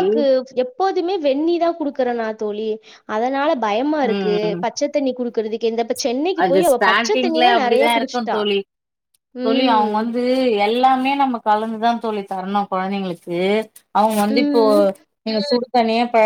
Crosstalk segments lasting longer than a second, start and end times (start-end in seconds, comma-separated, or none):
6.4-8.4